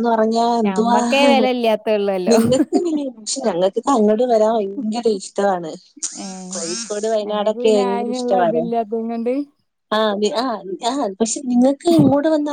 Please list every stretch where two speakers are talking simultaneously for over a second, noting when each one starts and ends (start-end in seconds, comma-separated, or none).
none